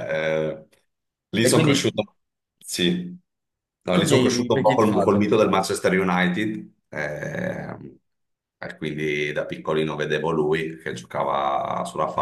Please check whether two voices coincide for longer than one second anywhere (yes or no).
yes